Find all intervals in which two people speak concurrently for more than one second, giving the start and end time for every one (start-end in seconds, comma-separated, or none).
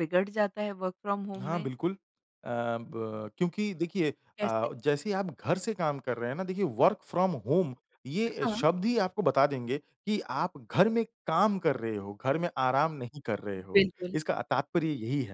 none